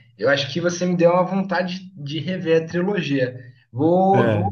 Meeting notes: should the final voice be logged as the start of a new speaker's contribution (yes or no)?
no